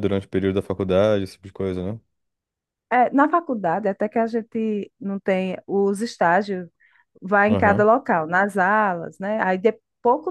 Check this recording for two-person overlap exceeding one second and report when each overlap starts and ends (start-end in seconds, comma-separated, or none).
none